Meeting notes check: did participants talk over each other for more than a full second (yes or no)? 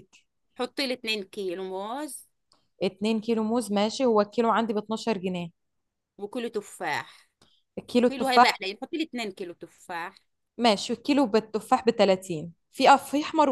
no